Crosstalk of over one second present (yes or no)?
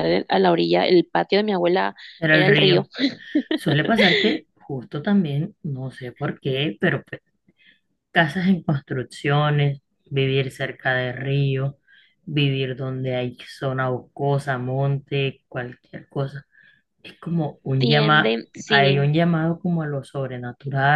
yes